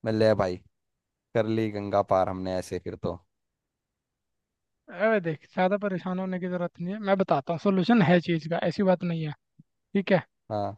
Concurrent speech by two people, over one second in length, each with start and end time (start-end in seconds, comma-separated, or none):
none